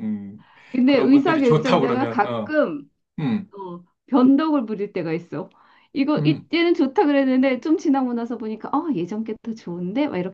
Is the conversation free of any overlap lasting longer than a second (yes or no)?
no